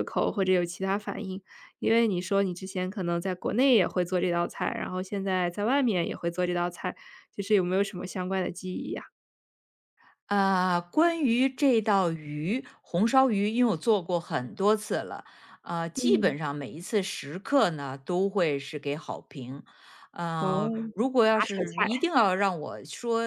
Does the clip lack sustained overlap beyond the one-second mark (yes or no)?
yes